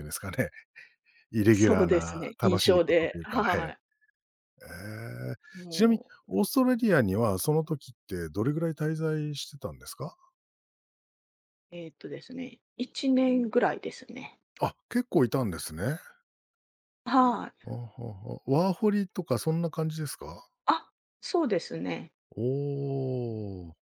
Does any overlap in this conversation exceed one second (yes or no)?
yes